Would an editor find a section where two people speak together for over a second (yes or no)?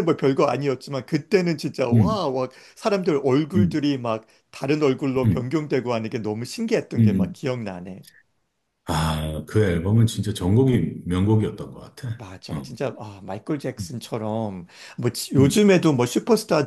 no